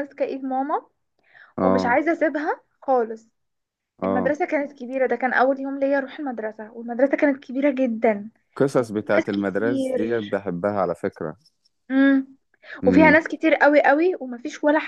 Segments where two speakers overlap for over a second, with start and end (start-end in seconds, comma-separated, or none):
8.8-10.2